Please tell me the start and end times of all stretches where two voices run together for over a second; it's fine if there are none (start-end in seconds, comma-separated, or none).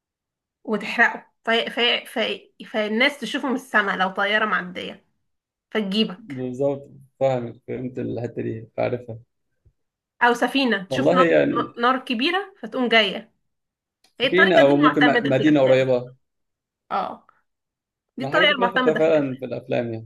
14.2-15.8, 18.2-19.5